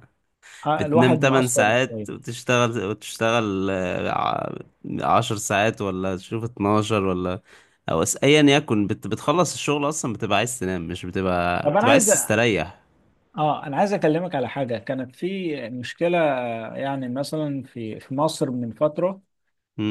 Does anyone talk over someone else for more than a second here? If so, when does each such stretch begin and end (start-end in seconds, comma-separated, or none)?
0.8-2.1